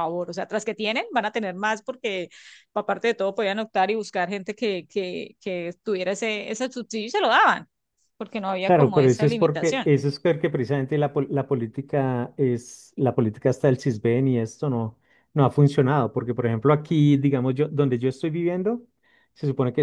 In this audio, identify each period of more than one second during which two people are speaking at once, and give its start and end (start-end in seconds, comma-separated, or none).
8.7-9.9